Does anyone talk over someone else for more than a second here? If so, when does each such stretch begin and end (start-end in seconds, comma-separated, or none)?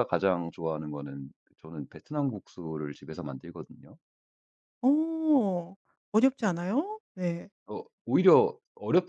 none